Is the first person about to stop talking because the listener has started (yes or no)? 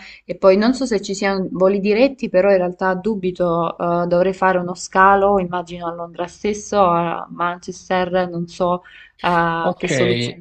yes